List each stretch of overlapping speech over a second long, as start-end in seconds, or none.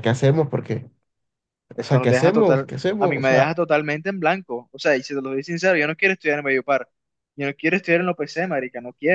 1.8-3.5